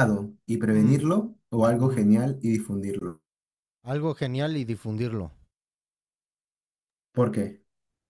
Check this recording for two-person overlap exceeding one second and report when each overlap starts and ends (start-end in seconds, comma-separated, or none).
none